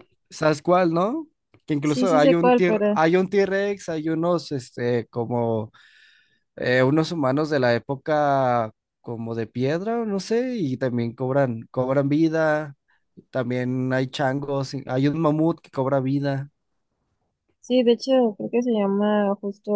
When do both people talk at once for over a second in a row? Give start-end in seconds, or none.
1.8-3.0